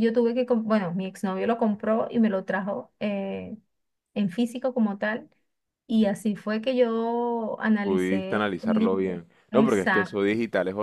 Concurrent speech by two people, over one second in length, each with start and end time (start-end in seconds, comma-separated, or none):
7.8-10.1